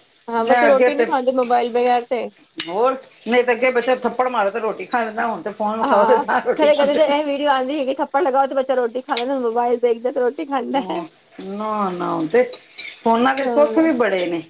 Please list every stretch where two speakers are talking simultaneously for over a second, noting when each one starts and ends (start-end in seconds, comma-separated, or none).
none